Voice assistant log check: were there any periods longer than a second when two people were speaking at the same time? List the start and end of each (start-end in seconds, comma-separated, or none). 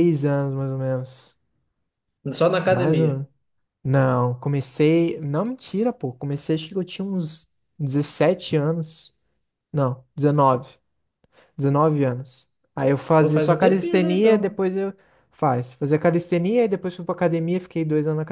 13.2-14.6